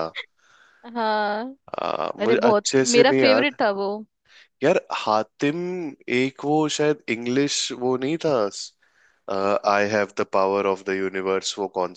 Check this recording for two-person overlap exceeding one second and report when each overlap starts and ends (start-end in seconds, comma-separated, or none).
2.2-3.6